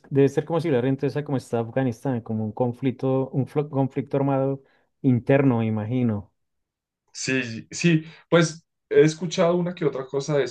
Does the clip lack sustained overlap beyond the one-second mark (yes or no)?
yes